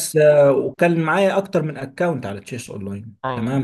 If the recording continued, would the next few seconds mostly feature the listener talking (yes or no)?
no